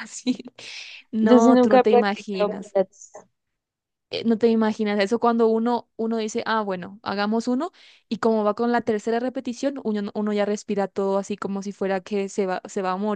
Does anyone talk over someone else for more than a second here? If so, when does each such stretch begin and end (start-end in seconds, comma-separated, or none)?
1.2-2.8